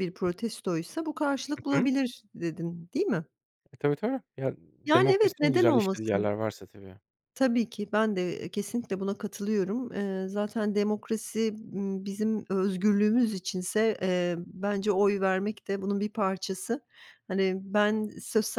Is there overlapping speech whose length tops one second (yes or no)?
yes